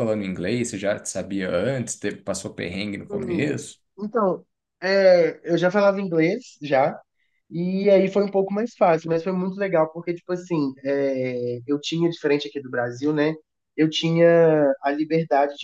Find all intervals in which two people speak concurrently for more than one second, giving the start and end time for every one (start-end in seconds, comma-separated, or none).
none